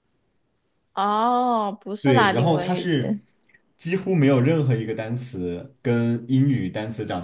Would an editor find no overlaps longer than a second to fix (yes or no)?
no